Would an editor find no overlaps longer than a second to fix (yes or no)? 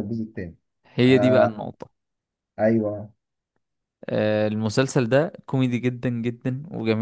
yes